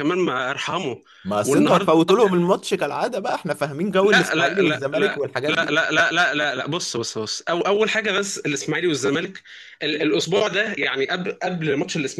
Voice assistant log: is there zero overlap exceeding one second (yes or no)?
no